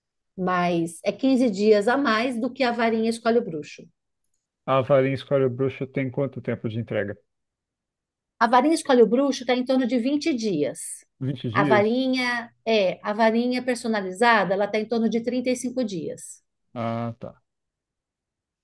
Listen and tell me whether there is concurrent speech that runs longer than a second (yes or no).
no